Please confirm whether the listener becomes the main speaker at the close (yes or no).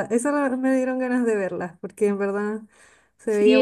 yes